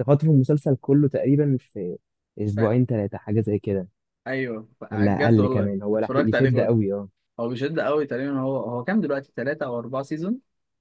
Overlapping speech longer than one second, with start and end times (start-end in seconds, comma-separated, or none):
4.9-6.7